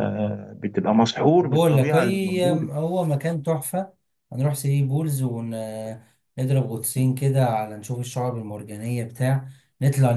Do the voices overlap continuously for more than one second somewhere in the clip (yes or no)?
yes